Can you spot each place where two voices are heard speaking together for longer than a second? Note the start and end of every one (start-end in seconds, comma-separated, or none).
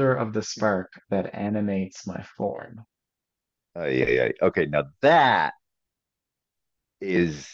none